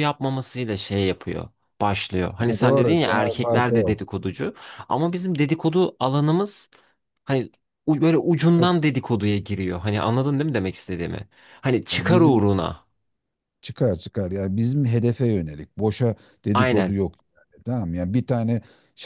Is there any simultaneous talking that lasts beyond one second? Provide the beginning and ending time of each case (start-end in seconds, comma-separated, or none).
2.4-4.0